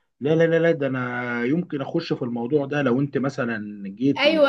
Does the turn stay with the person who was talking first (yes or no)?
no